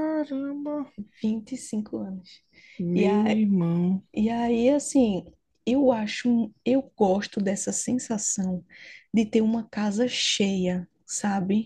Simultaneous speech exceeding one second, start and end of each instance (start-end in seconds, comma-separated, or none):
none